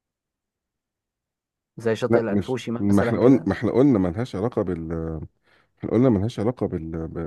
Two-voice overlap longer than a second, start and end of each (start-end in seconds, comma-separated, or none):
2.1-3.5